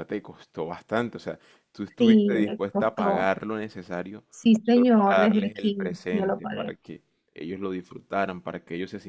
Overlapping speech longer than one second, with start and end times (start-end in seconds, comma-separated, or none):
2.0-3.3, 4.6-6.8